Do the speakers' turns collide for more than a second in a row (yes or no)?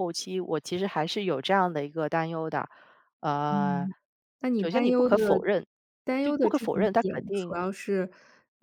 yes